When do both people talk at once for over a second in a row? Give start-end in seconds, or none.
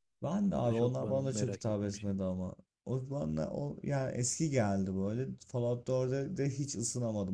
0.6-2.1